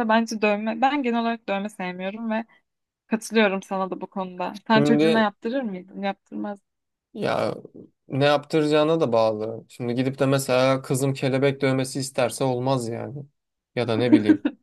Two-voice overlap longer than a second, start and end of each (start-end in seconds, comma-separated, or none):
none